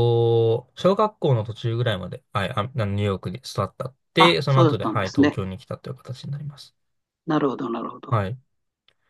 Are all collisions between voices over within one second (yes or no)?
no